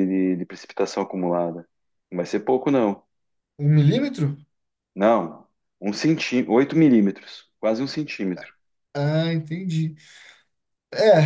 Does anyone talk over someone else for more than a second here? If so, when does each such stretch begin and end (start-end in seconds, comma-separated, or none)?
none